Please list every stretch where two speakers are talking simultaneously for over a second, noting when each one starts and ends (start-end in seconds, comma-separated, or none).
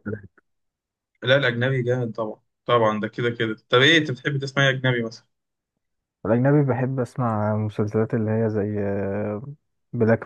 none